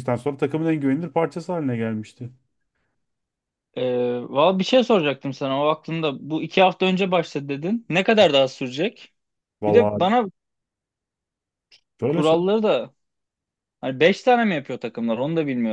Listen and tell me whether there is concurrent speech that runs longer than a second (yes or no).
no